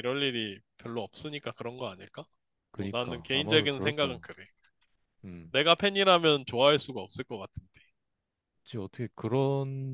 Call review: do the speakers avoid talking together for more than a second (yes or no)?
no